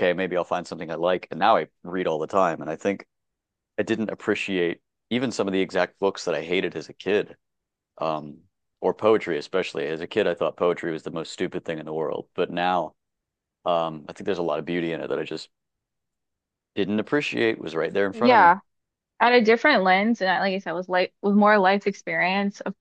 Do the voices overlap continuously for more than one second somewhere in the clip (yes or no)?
no